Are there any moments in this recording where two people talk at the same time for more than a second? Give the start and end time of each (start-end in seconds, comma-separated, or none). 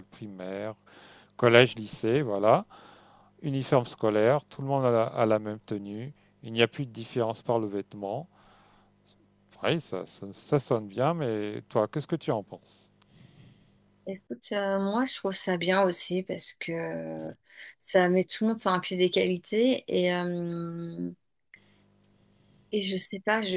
none